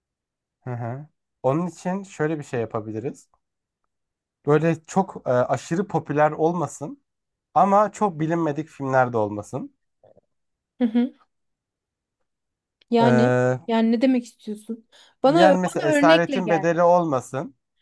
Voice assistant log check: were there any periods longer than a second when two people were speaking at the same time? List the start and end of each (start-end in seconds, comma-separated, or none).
15.3-16.7